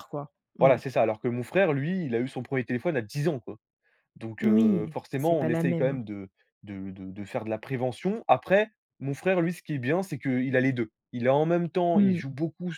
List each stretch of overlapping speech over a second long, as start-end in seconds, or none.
4.4-6.0